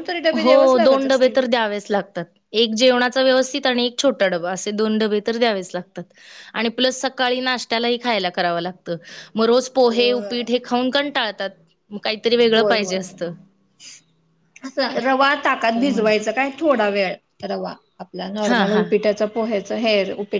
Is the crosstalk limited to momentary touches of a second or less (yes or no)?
yes